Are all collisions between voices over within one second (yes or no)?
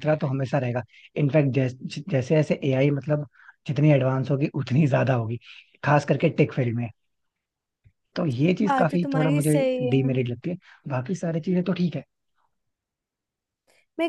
no